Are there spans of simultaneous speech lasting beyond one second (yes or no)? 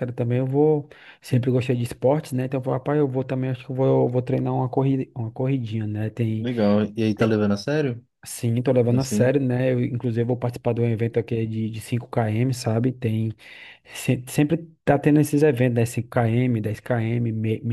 no